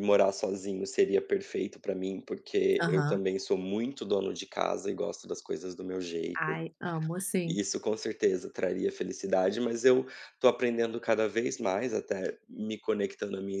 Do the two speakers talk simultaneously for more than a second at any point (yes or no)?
no